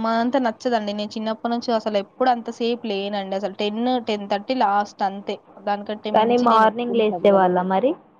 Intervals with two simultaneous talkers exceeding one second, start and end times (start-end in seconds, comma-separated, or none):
6.1-7.6